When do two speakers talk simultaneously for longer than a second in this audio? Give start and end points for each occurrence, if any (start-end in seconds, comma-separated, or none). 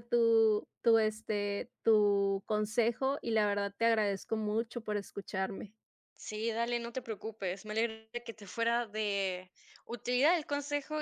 none